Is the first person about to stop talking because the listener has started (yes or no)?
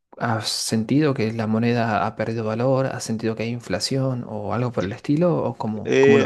yes